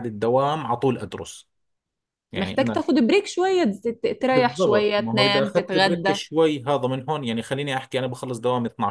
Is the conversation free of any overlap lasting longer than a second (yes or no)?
no